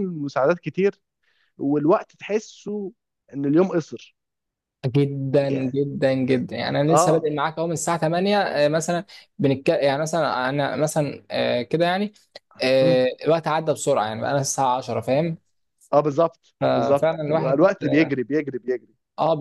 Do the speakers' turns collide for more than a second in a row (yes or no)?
yes